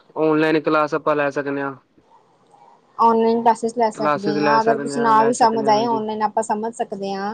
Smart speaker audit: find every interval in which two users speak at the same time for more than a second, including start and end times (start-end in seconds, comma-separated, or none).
4.0-6.0